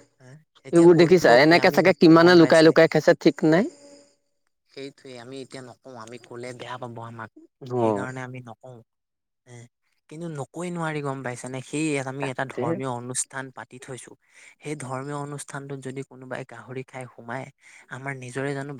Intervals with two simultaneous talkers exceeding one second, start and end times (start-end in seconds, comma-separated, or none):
0.7-2.7